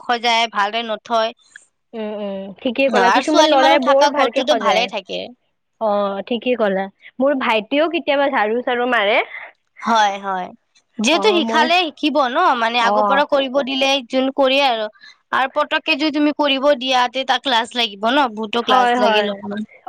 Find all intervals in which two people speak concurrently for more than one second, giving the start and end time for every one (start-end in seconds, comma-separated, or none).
3.1-4.9